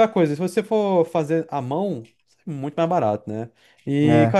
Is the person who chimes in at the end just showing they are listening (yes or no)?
yes